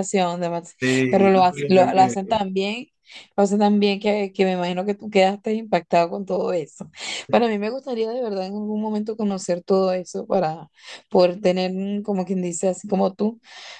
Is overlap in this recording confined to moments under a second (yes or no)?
no